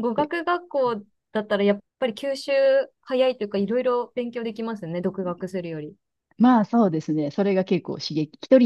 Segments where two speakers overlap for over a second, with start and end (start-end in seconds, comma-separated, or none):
none